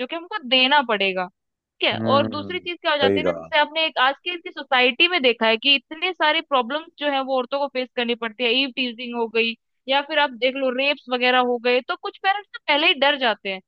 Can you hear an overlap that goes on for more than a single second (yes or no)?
yes